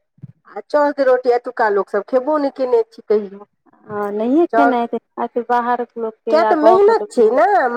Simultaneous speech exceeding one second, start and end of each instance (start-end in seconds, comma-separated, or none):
none